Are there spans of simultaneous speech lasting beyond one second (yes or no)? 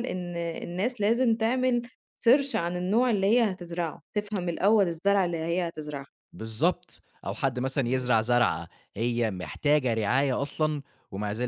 no